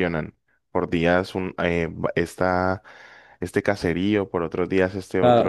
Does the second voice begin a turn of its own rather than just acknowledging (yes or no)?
yes